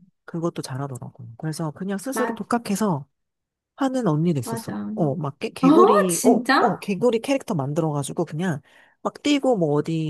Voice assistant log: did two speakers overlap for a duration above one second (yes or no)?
yes